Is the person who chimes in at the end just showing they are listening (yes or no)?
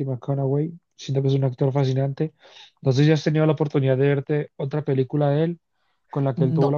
yes